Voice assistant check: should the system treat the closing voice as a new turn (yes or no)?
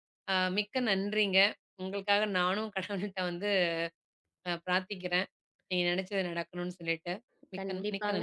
yes